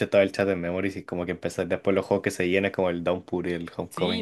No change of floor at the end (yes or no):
no